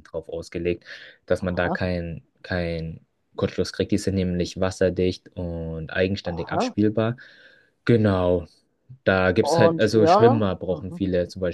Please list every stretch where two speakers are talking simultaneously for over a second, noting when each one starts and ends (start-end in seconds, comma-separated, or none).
9.4-11.0